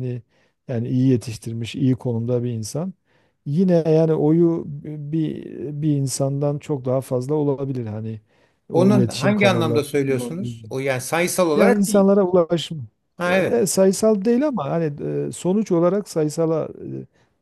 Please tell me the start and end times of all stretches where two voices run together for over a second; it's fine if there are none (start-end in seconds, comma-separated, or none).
8.7-10.6